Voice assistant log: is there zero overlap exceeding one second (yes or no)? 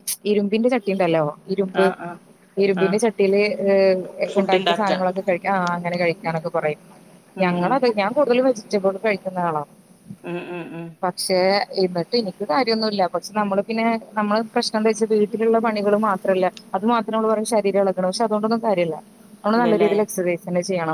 yes